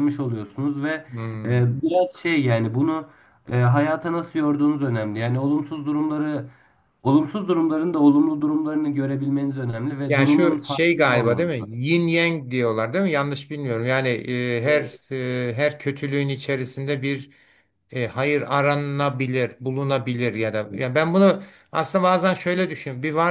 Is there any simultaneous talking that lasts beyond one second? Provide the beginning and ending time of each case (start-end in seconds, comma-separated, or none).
10.1-11.9